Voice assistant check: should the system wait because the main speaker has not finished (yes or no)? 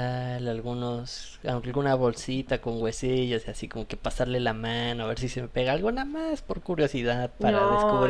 no